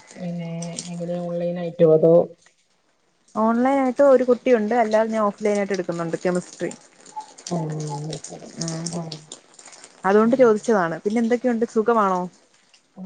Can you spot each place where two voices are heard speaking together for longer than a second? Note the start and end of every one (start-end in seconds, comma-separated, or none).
none